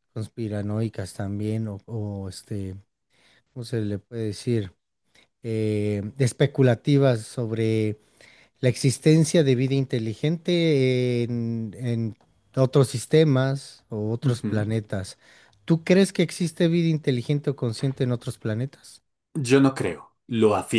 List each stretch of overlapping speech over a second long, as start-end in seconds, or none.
none